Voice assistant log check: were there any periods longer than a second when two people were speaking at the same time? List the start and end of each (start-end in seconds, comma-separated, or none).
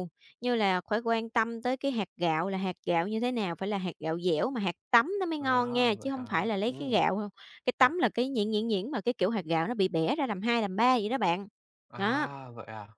5.4-7.0